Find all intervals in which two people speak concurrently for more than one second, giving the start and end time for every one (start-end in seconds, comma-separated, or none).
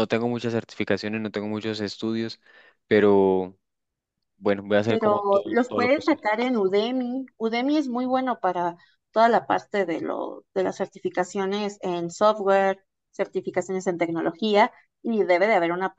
4.8-6.2